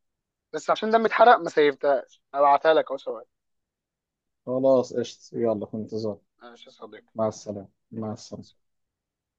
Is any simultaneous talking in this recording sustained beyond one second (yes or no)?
no